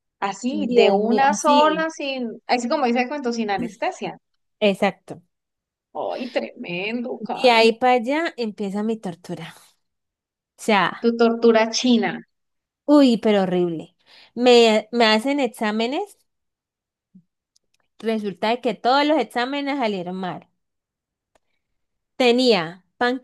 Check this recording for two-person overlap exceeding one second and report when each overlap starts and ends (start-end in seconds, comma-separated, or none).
0.5-1.9